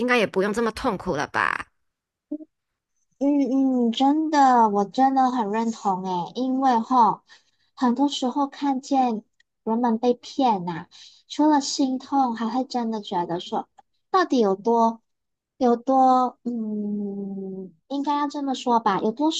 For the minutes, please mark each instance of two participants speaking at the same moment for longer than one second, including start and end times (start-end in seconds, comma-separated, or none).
none